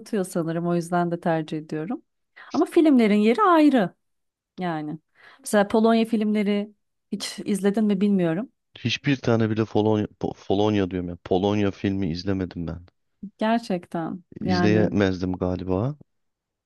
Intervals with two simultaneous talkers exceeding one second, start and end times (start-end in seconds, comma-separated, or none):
none